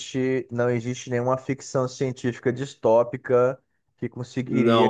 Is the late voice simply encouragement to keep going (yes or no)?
yes